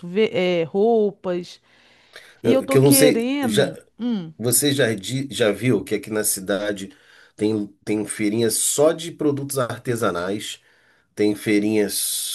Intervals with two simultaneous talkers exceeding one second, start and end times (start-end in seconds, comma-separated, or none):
2.4-3.7